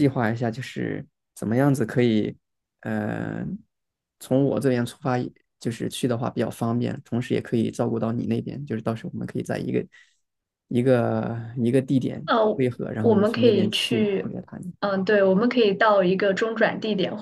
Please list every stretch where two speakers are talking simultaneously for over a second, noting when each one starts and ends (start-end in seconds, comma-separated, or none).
13.0-14.3